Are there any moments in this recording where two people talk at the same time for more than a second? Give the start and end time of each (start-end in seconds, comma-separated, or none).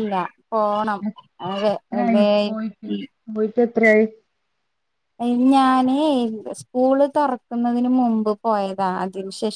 none